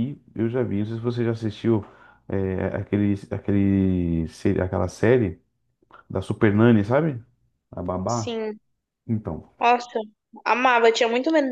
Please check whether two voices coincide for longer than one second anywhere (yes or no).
no